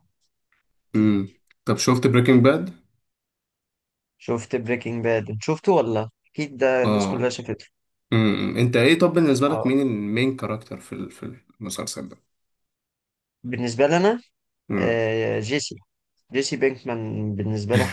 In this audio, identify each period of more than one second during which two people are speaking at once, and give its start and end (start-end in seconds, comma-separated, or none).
none